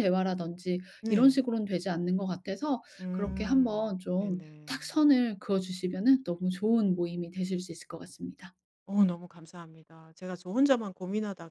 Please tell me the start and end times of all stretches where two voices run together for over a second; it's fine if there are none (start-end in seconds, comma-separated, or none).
3.0-4.8